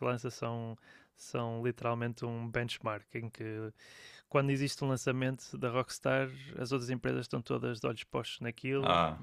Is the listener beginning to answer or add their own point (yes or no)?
no